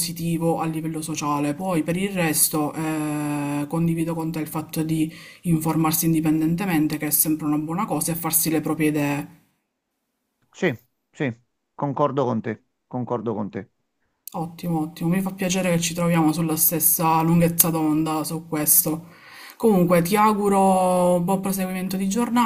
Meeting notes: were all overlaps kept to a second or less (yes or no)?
yes